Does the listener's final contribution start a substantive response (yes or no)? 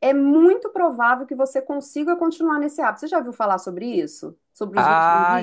yes